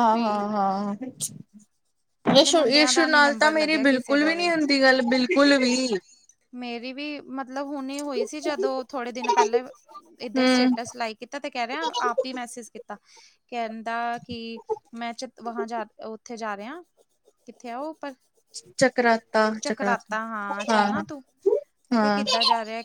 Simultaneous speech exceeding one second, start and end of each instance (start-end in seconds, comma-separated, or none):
2.4-4.3